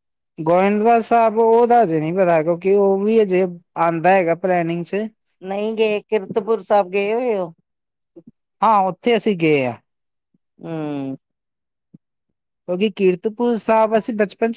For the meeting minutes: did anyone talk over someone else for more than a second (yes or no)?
no